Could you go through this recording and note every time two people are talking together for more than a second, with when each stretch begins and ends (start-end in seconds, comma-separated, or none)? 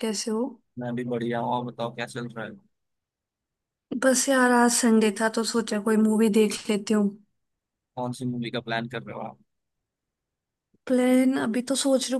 none